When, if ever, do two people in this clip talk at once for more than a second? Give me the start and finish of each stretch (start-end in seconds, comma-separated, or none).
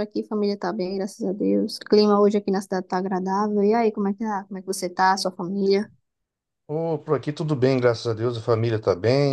none